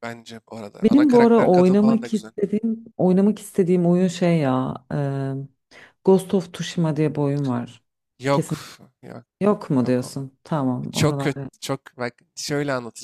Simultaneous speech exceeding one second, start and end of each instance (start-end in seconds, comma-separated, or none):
0.8-2.3